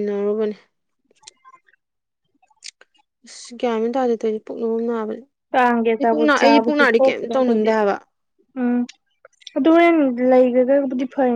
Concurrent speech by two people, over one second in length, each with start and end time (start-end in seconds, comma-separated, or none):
6.0-7.7